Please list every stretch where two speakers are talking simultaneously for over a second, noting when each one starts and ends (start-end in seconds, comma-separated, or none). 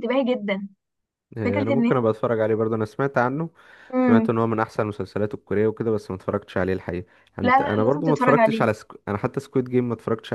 7.4-8.7